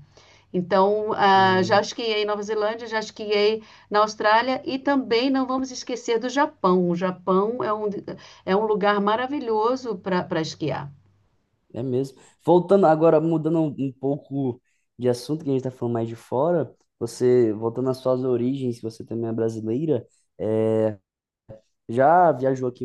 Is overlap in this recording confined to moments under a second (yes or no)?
yes